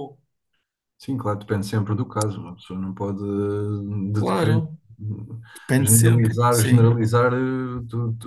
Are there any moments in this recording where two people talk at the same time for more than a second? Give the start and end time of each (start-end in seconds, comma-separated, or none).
5.8-7.0